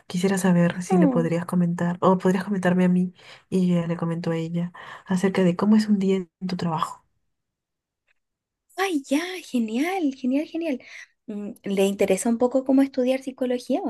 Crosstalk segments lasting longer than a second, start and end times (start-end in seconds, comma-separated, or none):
none